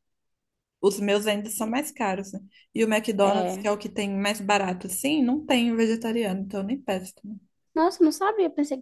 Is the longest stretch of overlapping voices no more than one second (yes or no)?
yes